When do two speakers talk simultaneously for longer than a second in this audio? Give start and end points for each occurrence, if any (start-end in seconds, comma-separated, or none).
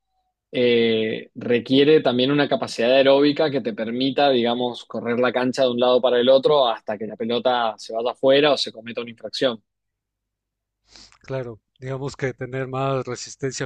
none